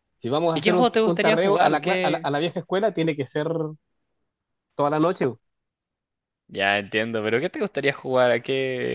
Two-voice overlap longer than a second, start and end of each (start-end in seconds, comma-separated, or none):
0.5-2.3